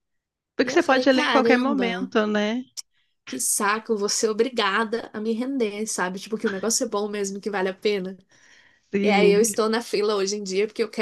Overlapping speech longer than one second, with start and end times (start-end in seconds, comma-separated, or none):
0.6-2.1